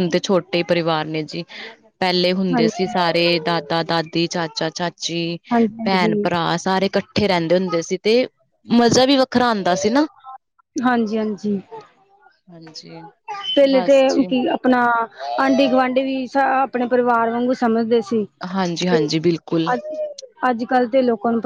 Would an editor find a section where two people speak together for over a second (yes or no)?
no